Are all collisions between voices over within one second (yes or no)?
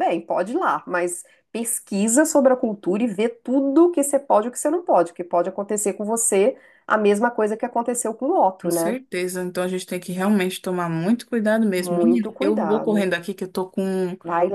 no